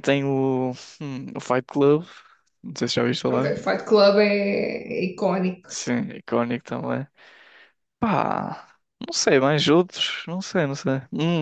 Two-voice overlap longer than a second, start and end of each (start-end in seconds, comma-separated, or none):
none